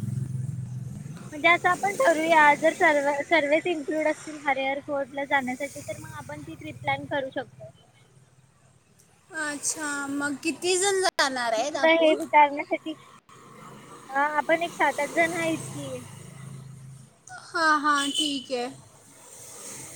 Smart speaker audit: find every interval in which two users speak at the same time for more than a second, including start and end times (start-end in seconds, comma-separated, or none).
none